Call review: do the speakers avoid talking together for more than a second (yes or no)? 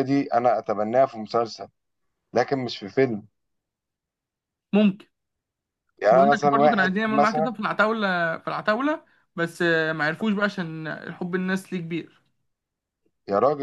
no